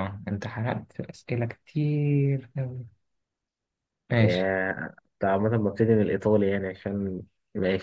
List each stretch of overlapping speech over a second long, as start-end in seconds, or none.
none